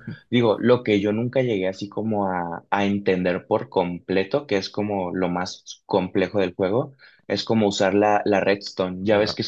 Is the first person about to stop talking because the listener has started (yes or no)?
no